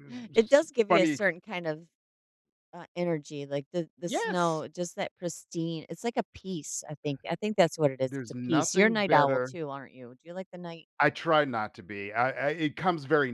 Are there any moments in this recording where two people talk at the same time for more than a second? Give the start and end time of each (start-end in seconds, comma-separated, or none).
8.1-9.5